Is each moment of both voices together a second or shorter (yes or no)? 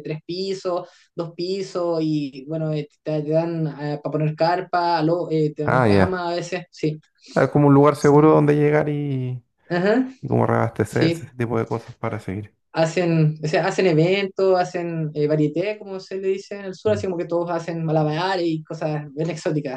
yes